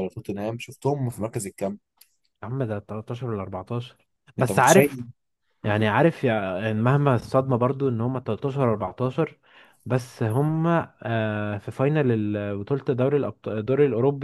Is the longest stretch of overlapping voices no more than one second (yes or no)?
yes